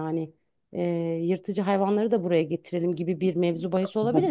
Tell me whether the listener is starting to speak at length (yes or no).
no